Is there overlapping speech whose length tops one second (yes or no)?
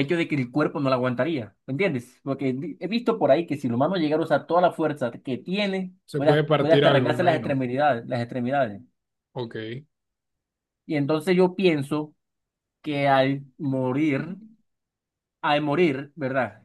yes